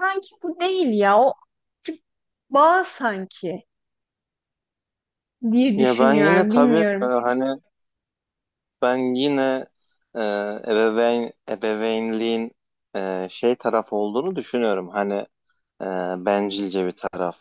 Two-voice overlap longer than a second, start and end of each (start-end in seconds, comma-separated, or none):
5.8-7.1